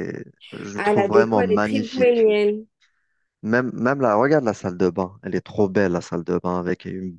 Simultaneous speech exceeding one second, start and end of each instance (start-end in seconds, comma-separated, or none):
0.7-2.2